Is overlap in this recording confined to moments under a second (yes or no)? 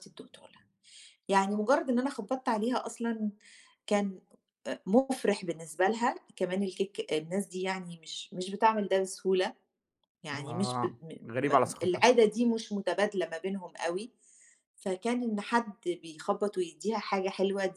no